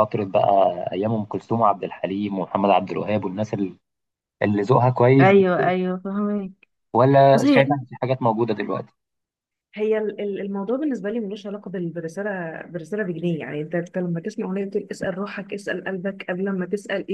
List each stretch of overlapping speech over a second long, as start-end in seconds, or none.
none